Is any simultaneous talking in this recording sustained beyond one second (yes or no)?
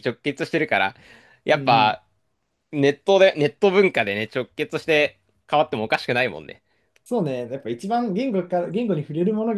no